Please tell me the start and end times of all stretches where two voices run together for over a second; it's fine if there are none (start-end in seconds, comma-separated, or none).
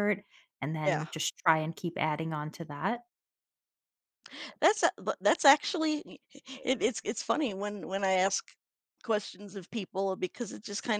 none